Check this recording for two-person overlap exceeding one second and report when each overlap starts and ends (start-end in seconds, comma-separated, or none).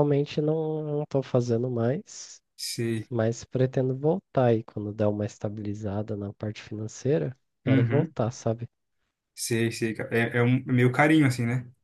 none